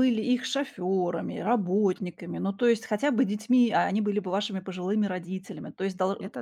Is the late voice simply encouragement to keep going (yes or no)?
yes